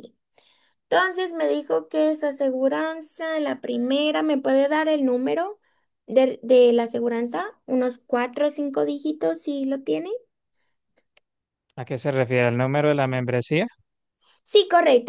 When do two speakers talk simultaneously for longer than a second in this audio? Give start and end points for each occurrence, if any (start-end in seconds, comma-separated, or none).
none